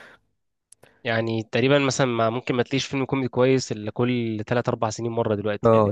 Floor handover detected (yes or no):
yes